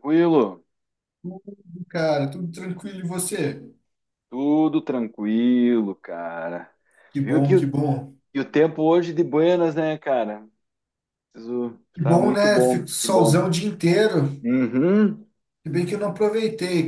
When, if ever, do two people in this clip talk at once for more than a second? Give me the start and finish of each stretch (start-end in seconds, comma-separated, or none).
11.9-13.4